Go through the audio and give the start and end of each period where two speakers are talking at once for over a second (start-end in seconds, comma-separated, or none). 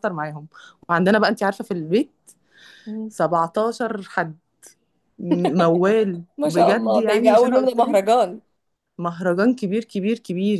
6.4-8.0